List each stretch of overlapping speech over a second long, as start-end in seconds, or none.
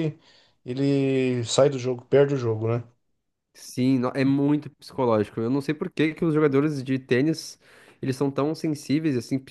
none